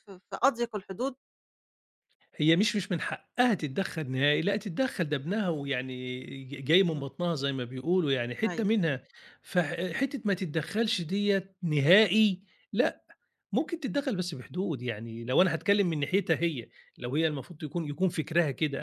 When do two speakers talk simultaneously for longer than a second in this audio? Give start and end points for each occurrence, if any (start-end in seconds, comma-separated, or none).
none